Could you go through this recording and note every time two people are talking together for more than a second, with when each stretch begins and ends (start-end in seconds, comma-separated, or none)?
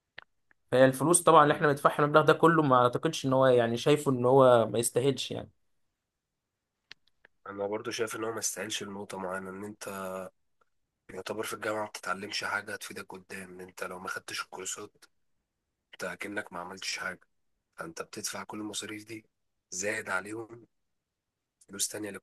none